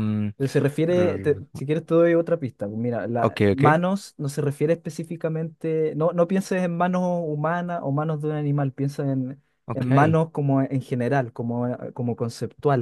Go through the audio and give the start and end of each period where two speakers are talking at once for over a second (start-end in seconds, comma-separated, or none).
none